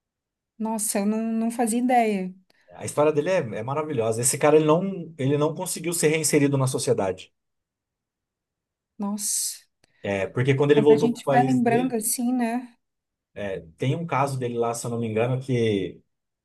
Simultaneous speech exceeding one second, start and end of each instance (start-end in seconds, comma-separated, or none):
10.7-12.0